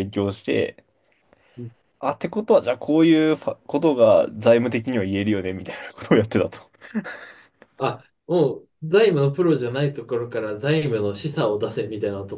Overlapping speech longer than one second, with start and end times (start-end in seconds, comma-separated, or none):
none